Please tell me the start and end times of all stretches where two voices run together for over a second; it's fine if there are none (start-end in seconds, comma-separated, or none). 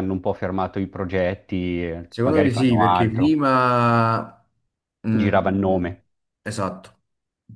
2.1-3.3